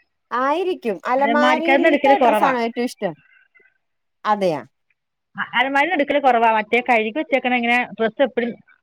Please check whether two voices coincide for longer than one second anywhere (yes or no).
yes